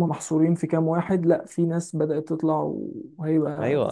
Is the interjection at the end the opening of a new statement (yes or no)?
yes